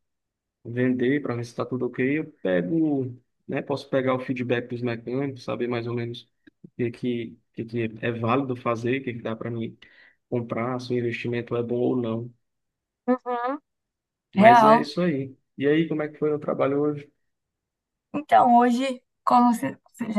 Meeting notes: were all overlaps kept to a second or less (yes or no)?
yes